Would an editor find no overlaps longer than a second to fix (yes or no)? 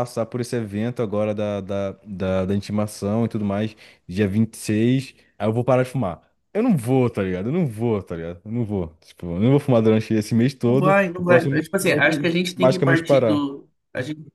no